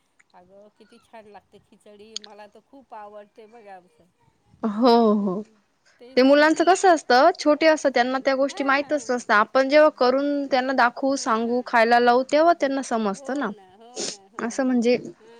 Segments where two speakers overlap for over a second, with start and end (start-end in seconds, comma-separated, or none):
none